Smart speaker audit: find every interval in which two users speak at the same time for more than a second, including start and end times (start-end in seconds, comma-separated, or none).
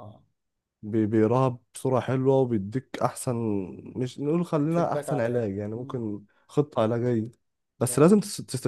4.7-6.0